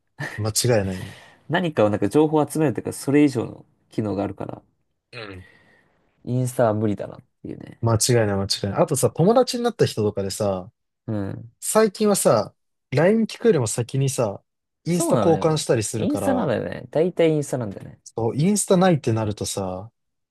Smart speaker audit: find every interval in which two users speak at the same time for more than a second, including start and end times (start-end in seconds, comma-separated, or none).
14.9-16.6